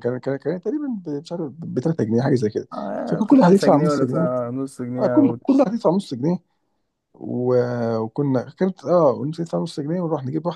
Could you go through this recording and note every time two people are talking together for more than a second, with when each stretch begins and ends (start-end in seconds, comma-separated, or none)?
3.1-4.3